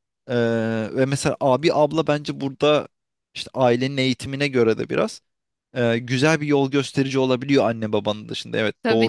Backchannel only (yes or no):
yes